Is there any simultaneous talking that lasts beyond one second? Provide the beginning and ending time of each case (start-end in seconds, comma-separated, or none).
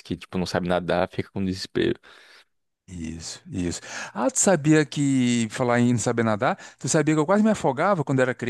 none